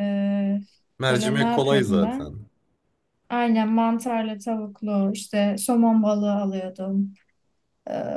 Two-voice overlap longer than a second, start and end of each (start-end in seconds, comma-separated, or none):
1.1-2.4